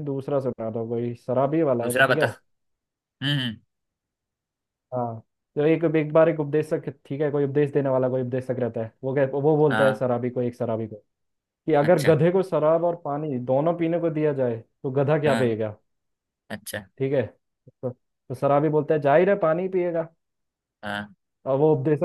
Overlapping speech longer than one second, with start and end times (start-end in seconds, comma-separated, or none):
none